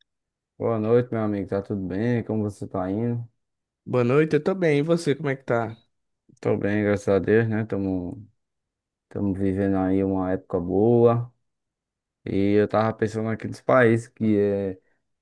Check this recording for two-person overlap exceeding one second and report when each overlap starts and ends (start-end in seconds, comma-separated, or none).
none